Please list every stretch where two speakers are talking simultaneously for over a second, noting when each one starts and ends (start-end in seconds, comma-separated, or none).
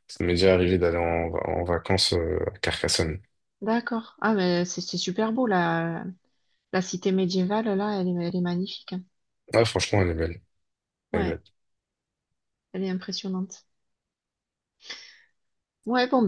none